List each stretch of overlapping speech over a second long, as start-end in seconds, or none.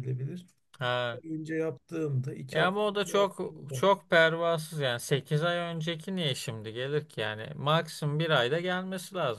2.5-3.8